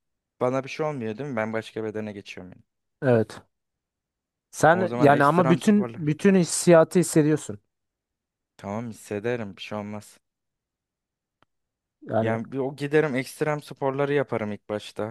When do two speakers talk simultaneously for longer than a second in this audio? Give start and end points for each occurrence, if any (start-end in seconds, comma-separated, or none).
4.7-6.2